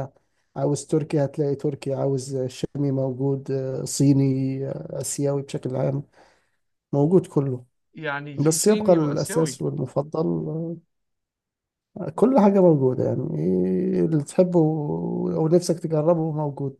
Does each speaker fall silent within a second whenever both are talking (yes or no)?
no